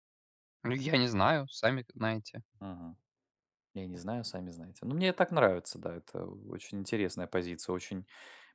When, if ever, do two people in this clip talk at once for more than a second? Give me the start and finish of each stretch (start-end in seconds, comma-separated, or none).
none